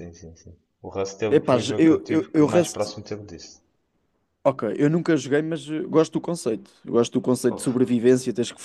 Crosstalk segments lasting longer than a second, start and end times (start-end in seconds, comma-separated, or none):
1.3-2.9